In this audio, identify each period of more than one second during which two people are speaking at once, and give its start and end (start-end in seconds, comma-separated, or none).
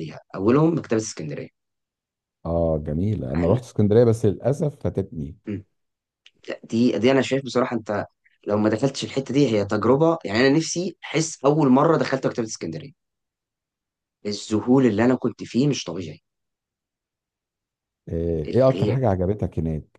none